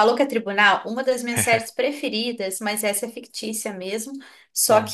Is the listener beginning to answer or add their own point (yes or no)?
no